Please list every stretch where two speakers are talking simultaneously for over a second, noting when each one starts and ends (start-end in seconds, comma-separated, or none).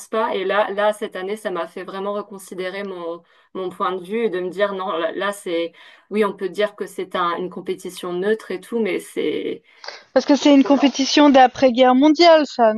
none